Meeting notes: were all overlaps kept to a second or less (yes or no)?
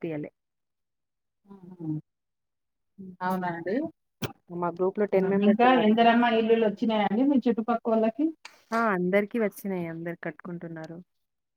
yes